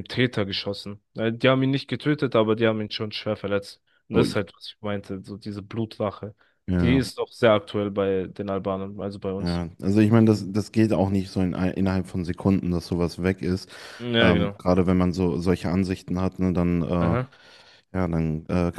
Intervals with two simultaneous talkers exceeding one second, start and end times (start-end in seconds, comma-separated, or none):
none